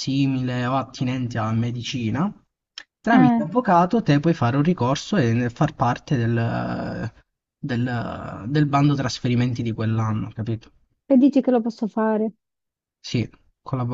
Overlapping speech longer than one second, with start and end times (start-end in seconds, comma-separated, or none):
none